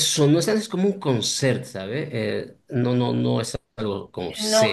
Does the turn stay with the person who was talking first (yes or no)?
no